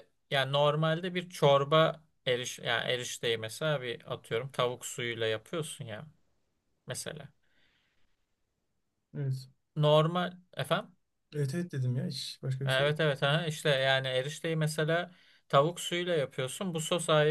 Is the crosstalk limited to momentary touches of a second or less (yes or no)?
yes